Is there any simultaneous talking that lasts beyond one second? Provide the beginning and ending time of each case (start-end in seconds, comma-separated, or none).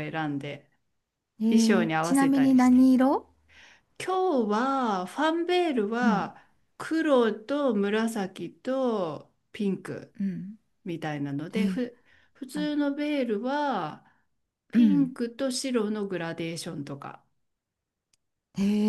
1.5-2.9